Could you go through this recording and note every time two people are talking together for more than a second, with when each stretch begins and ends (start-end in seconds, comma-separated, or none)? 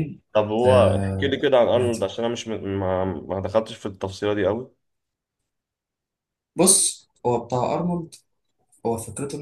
0.7-2.1